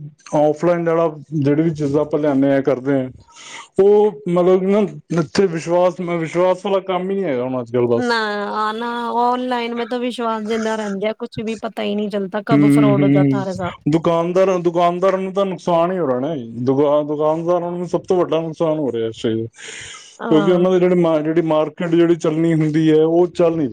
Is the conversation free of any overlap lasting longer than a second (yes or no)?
yes